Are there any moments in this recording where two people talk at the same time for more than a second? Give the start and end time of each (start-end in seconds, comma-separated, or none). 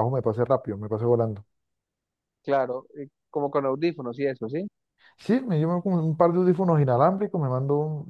none